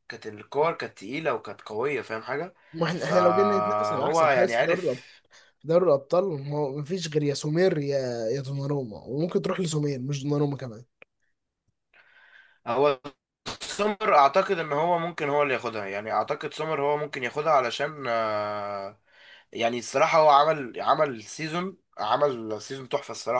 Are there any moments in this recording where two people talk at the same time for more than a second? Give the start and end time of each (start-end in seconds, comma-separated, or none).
2.9-5.0